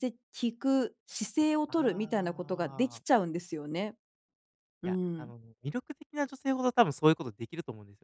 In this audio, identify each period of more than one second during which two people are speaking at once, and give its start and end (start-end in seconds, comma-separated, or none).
1.7-3.0